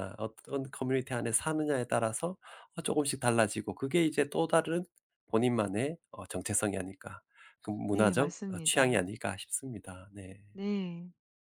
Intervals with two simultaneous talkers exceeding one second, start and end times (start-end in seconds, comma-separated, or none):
7.9-9.1